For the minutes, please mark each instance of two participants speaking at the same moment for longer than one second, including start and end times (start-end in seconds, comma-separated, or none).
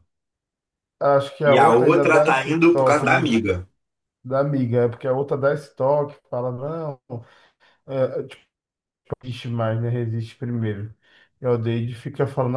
1.4-3.3